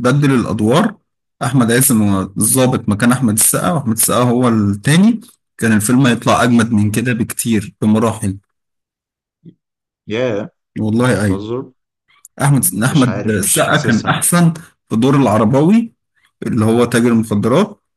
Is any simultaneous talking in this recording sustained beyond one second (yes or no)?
yes